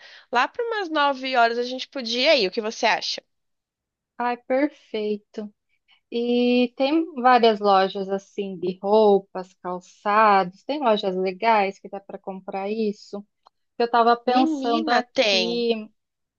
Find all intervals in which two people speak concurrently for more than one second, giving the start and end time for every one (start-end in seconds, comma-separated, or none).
14.2-15.7